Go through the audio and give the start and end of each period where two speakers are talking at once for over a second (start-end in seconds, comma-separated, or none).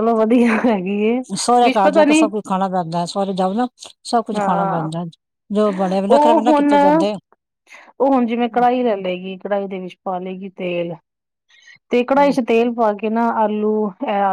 none